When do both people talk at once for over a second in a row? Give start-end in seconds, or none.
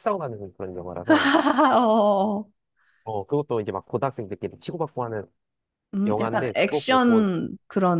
6.0-7.3